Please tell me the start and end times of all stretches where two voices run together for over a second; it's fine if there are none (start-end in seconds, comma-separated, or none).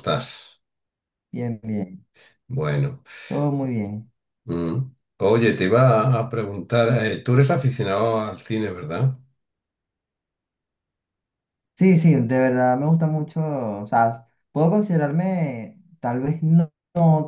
none